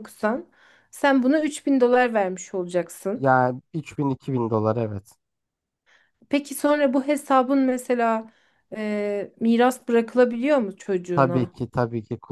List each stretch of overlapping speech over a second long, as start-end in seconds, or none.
none